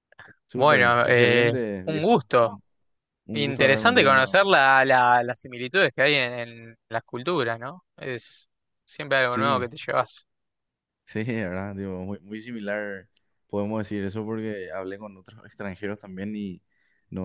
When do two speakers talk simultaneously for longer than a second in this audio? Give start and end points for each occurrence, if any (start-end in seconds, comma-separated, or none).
0.5-2.6, 3.3-4.5